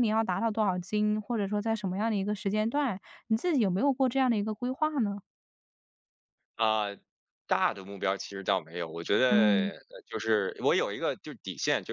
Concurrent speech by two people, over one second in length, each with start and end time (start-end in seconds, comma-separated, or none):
none